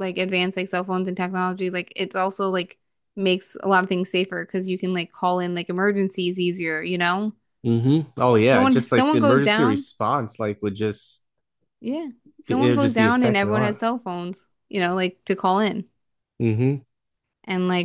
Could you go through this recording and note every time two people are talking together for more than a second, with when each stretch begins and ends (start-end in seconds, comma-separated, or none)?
8.5-9.9, 12.5-13.8